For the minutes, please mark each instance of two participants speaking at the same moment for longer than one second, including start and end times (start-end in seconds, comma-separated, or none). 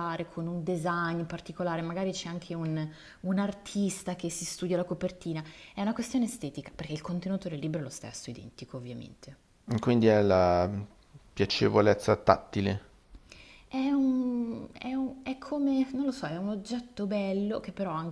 none